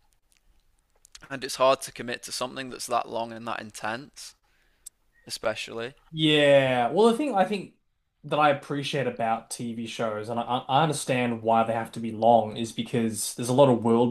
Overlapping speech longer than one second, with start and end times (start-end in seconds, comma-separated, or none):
none